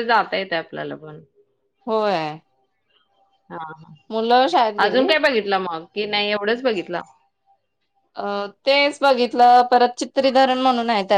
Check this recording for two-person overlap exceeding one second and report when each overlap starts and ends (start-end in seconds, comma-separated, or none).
none